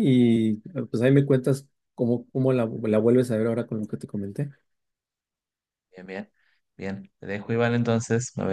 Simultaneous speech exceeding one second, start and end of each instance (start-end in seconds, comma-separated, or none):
none